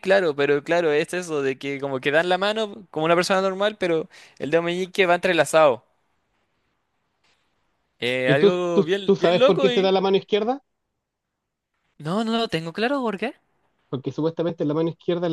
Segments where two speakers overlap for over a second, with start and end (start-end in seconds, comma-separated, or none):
8.3-9.9